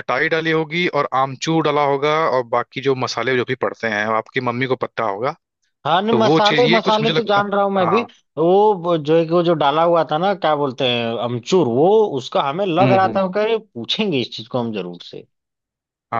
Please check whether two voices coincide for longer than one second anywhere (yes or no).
yes